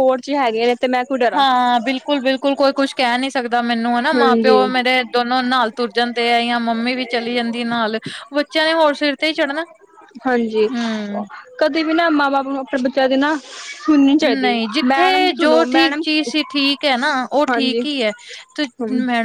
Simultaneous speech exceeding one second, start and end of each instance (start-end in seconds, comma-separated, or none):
14.2-16.0